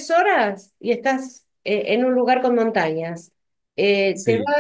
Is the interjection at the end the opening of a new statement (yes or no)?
no